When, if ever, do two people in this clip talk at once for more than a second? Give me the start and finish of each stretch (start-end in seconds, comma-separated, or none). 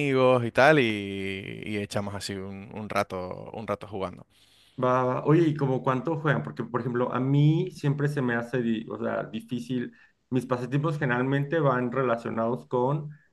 none